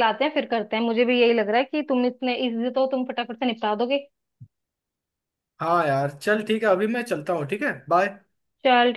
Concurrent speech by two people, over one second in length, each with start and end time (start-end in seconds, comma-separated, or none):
none